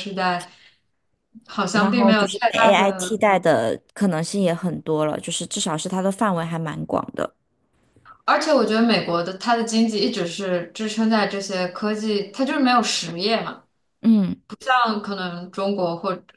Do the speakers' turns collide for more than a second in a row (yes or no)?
yes